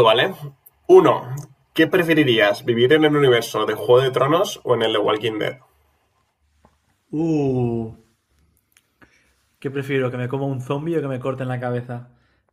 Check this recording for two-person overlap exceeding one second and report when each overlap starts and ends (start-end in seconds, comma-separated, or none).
none